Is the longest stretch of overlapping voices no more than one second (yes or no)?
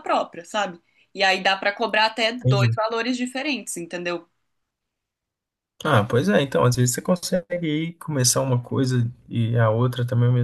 yes